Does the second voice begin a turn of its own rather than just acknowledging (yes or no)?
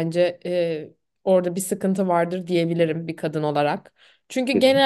no